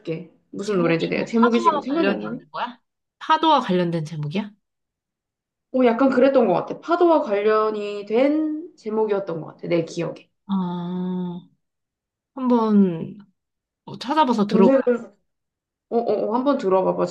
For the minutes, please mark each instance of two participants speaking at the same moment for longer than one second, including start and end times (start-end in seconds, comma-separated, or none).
0.6-2.4